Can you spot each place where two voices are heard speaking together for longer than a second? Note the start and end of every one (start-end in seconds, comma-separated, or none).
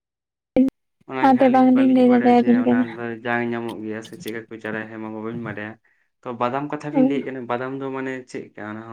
1.2-2.9